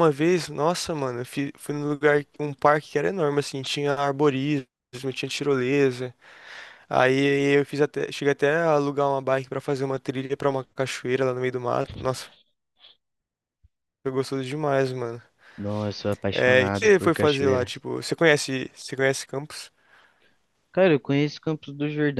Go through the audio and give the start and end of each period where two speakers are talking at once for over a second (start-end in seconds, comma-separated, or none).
16.3-17.7